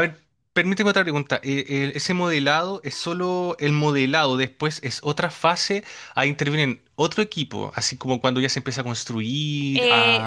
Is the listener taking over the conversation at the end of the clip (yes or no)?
yes